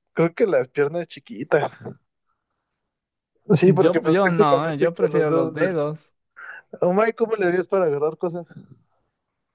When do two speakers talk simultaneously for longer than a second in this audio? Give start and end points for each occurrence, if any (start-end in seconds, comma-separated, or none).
3.6-5.8